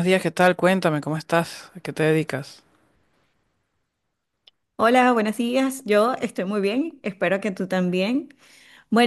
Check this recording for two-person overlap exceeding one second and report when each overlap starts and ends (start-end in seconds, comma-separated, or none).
none